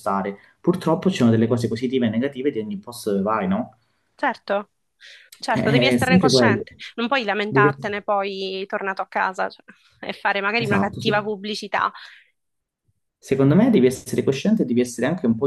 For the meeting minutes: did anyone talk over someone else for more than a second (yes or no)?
yes